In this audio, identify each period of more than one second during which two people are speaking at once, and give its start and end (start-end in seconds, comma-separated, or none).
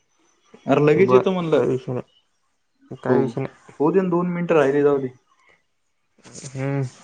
3.8-5.0